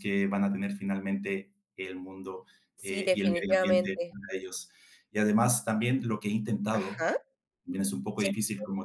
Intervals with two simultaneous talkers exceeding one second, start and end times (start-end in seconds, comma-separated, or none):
2.8-4.2